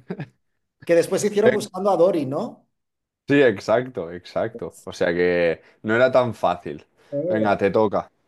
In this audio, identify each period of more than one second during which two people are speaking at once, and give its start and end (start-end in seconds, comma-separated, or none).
none